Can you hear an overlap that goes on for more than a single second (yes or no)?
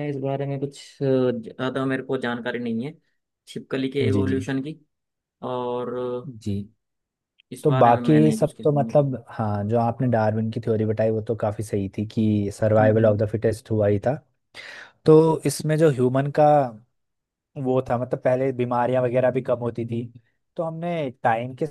yes